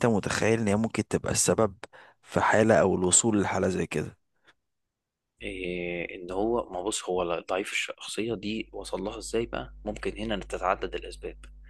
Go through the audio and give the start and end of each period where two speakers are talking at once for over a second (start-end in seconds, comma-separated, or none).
none